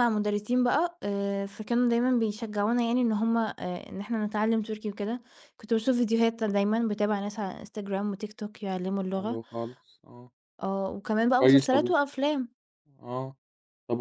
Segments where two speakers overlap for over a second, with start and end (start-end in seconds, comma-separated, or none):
none